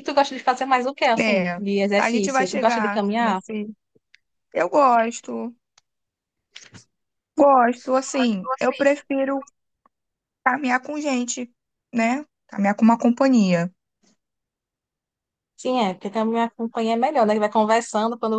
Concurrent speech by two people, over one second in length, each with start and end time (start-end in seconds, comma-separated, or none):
1.2-3.4